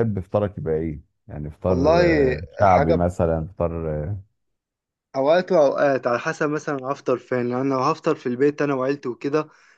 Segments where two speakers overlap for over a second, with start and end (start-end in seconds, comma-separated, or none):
1.7-3.0